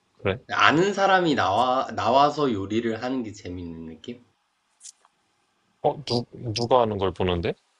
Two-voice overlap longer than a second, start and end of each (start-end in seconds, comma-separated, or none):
none